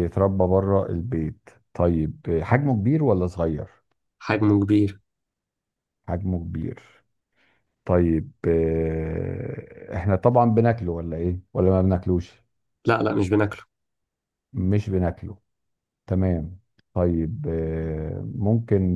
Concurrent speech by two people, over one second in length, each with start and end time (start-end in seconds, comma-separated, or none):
none